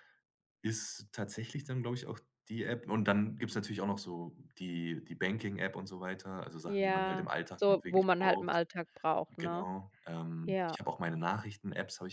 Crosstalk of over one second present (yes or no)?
yes